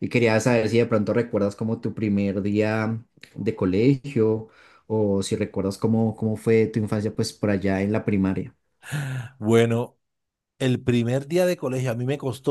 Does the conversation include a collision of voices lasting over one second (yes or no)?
no